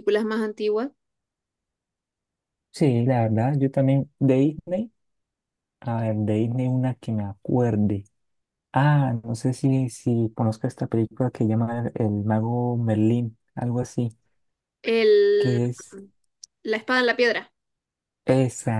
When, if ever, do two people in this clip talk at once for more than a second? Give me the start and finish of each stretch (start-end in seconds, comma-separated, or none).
none